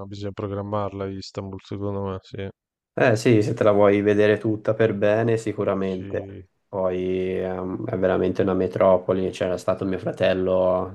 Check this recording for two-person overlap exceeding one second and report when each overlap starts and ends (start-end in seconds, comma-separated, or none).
none